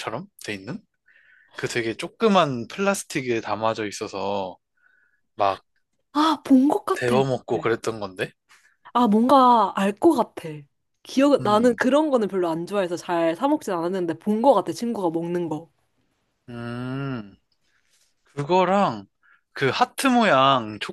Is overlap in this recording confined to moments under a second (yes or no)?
yes